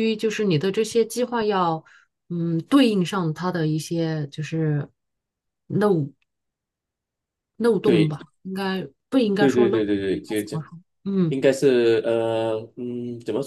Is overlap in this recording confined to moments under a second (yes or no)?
no